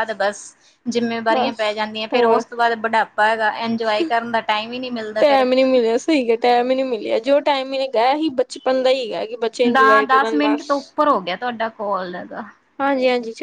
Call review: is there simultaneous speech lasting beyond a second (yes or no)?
no